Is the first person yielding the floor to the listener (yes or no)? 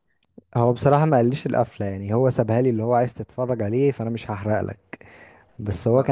no